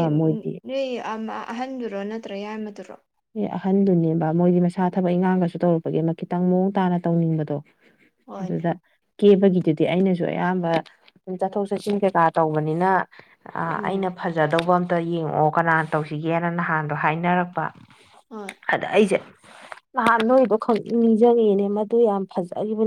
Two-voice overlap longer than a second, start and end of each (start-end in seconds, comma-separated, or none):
none